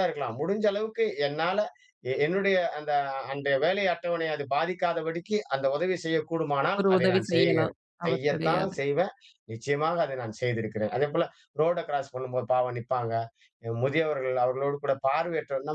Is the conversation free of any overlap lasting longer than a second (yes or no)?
no